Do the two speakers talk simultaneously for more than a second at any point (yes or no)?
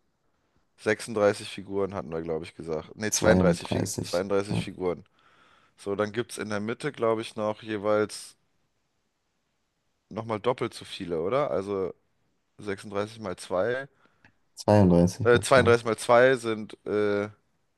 yes